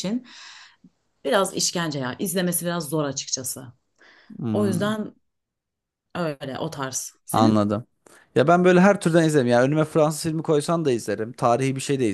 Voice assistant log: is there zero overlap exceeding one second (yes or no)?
yes